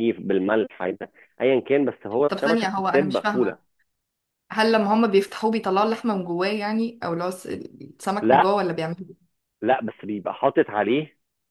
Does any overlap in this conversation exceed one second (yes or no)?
yes